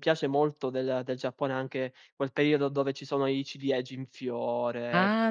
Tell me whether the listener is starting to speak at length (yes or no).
yes